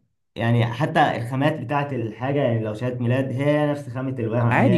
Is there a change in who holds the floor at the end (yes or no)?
yes